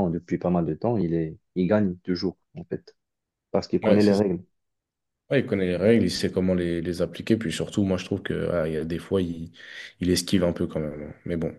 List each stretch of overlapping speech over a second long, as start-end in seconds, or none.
none